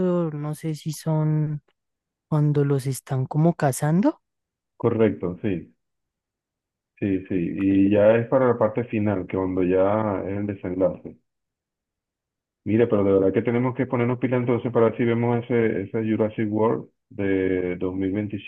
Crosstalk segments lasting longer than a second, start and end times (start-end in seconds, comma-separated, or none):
none